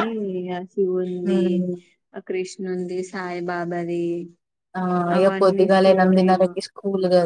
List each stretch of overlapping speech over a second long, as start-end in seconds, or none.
5.2-6.5